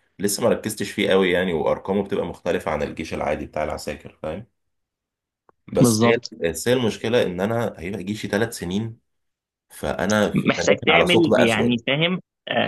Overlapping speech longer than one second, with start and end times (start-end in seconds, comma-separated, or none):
10.3-11.8